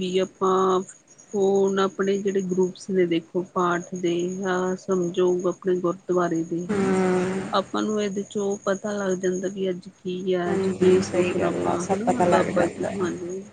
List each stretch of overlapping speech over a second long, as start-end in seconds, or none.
10.8-12.9